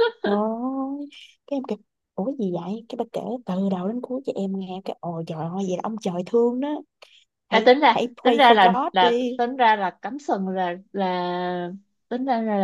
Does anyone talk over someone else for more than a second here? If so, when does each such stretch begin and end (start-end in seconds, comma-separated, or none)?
7.5-9.4